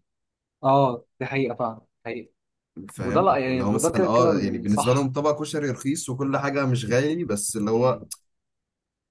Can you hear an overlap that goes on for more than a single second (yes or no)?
yes